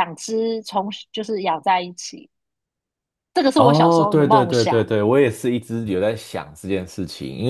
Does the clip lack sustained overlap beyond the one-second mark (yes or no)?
no